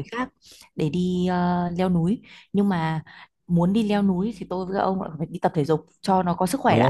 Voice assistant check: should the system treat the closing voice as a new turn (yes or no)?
yes